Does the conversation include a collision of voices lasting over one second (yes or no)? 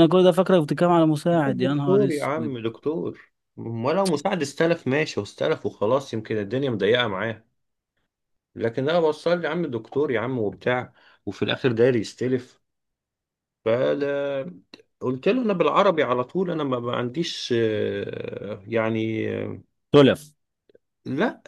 yes